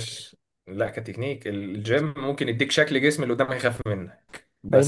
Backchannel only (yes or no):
no